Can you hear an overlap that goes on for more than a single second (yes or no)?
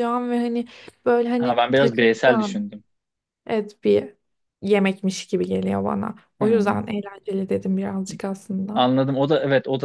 yes